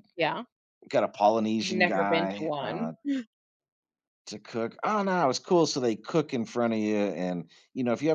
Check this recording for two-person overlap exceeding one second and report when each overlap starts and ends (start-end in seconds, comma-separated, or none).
1.6-2.9